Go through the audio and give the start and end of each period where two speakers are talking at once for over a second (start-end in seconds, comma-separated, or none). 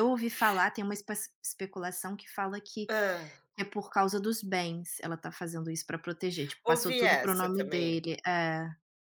6.7-8.0